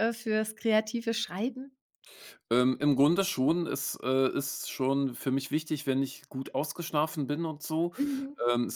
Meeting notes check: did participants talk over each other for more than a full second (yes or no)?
no